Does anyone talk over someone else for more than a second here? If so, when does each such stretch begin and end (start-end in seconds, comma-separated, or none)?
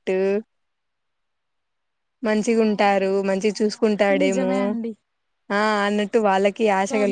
2.4-4.5